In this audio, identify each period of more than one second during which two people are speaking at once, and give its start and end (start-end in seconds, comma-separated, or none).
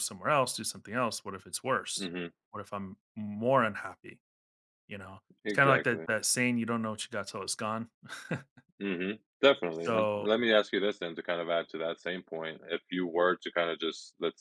none